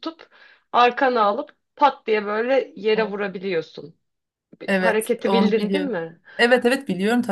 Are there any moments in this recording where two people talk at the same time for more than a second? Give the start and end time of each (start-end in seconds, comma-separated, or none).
4.7-6.0